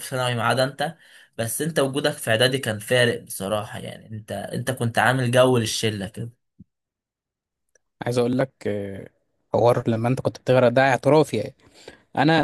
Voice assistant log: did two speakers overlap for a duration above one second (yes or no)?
no